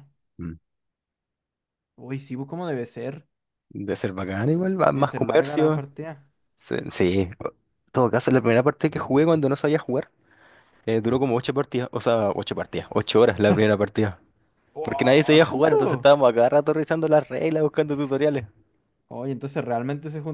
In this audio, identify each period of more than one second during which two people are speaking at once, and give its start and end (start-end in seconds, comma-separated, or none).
4.6-5.8, 14.8-16.1